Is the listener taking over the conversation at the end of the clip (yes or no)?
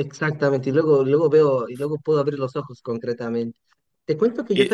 no